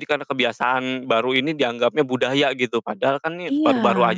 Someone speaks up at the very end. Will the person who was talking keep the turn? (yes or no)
yes